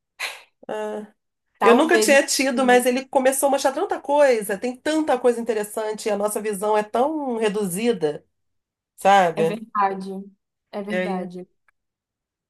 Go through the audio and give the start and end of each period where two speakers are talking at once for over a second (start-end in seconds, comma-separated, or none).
1.6-2.9